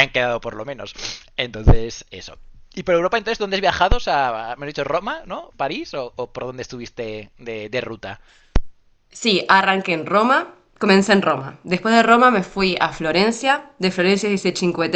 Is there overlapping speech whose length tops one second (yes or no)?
no